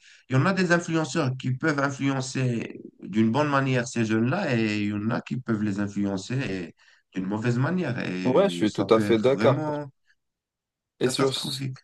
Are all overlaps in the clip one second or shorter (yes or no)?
no